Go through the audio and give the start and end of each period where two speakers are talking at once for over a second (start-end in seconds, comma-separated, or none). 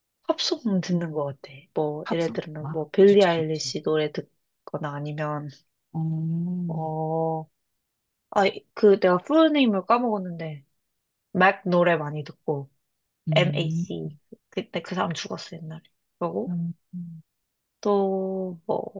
2.0-3.7